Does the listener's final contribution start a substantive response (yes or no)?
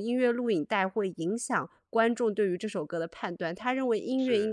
no